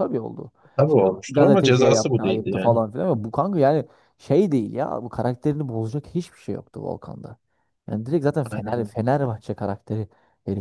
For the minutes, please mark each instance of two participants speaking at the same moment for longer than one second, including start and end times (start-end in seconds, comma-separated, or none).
0.9-2.8